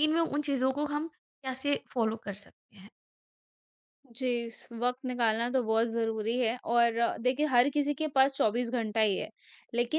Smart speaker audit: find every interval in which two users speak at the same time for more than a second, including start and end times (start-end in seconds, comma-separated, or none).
none